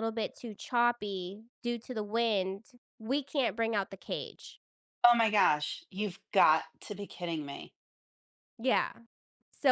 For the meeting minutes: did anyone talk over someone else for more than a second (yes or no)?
no